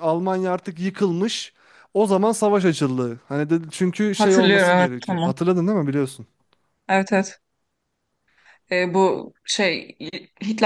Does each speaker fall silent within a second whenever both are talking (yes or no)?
no